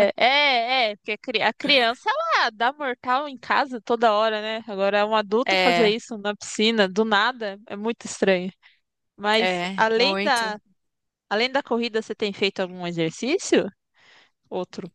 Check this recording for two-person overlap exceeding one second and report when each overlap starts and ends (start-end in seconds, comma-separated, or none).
9.4-10.6